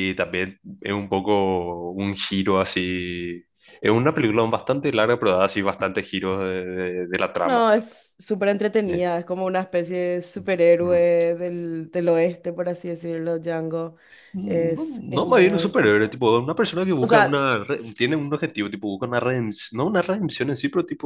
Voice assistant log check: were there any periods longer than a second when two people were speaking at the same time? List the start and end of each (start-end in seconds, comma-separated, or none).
14.5-16.2